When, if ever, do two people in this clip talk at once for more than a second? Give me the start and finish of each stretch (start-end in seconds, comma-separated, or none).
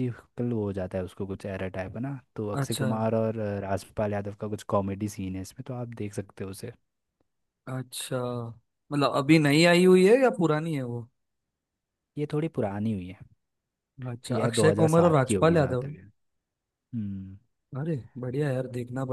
14.3-15.9